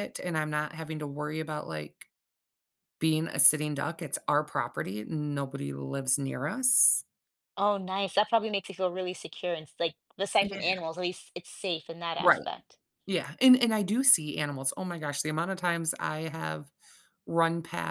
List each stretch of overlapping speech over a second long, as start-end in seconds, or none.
none